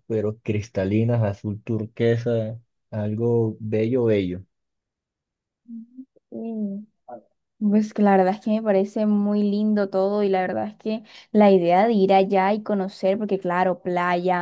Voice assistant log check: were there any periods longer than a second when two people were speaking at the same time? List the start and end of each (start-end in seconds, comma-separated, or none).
none